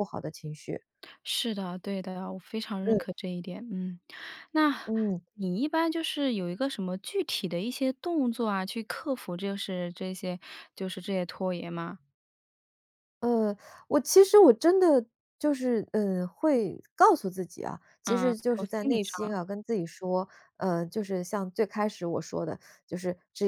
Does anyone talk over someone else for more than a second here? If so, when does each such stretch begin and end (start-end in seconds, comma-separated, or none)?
18.1-19.4